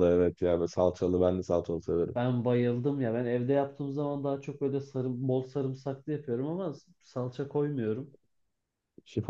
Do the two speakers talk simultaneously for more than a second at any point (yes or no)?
no